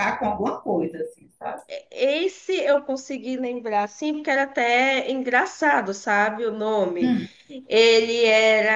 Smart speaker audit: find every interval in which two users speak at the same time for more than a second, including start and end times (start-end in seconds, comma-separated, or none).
none